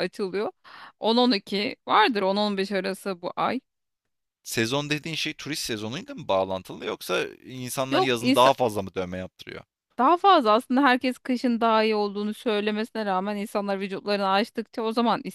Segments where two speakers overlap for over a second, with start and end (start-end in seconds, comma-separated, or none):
none